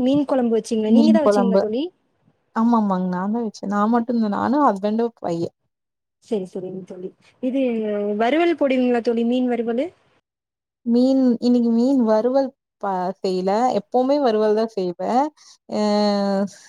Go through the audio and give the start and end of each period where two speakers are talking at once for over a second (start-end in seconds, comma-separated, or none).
none